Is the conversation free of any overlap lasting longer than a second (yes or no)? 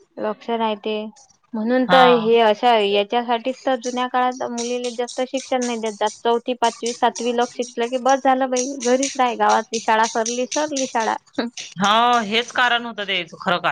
yes